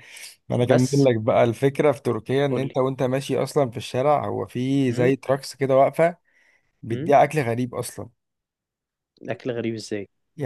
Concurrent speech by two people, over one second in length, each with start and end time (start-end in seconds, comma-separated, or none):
none